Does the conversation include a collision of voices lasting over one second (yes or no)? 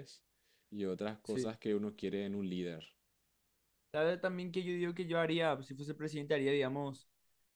no